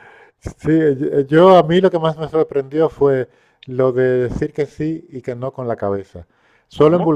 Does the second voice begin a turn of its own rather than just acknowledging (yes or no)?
no